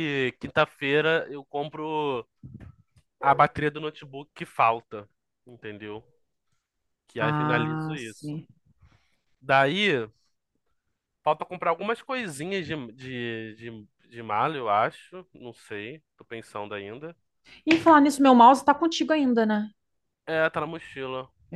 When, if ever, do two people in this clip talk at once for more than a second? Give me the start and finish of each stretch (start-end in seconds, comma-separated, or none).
7.2-8.4